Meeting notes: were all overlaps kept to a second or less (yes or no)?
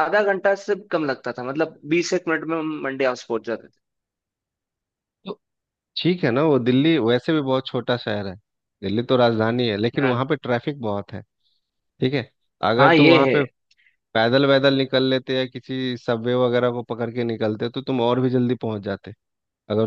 yes